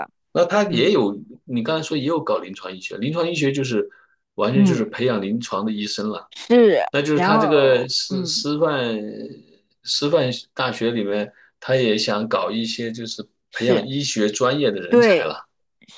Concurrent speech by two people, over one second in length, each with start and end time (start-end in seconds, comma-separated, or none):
6.9-8.4